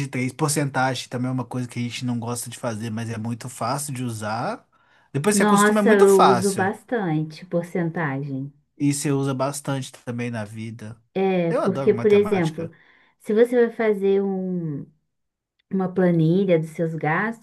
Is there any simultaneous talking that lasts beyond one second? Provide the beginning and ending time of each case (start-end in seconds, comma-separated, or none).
5.3-6.7, 11.5-12.7